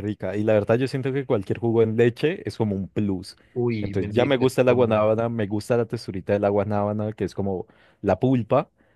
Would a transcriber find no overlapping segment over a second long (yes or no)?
no